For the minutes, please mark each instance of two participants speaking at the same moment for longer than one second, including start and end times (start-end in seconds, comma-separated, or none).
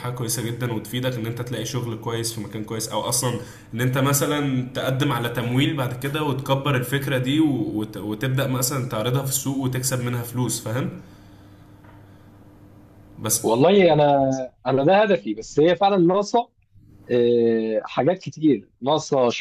none